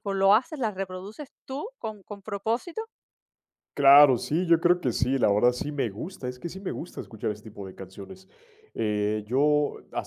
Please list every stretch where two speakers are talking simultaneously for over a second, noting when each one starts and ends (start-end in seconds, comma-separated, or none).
none